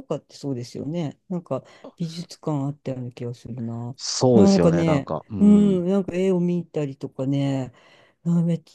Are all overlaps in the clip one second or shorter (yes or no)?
no